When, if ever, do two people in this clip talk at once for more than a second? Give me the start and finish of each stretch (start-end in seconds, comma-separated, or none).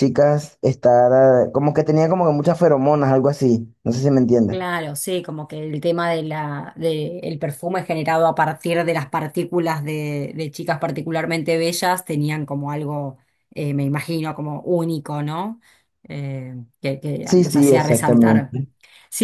17.2-18.6